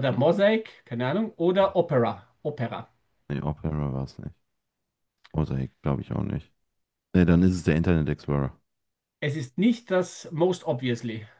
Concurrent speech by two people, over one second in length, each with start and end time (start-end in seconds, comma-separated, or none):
none